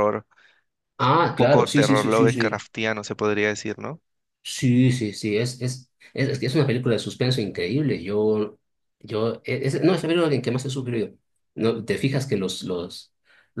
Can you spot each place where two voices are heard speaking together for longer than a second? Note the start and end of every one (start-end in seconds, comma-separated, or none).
1.2-2.7